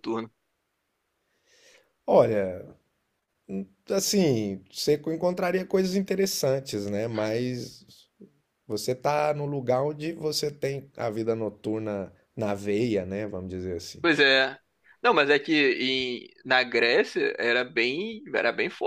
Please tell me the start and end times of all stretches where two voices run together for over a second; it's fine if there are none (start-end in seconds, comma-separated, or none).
none